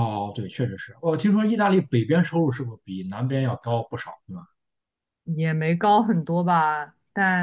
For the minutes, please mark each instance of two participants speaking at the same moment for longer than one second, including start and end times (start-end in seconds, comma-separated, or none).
none